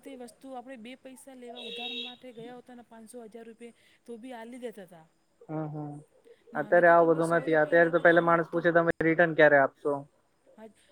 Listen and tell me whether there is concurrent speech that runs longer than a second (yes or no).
yes